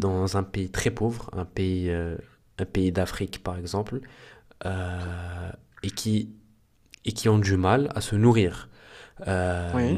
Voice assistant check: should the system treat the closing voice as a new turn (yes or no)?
no